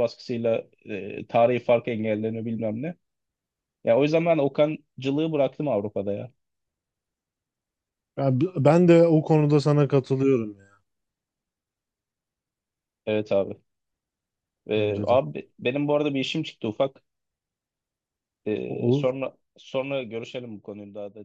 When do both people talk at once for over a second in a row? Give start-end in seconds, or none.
none